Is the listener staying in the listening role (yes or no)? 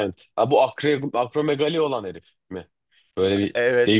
no